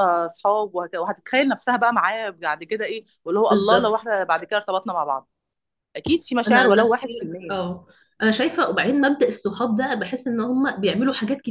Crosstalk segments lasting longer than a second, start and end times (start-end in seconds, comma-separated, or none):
6.5-7.7